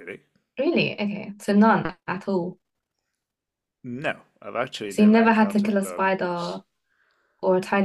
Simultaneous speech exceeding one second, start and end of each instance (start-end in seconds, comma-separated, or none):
4.9-6.6